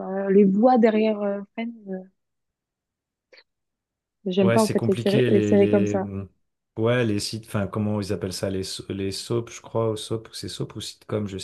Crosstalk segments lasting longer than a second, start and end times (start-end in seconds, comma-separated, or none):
4.4-6.1